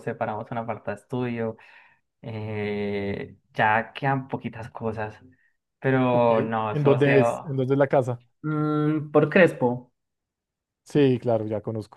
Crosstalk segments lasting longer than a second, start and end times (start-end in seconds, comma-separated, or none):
6.1-7.5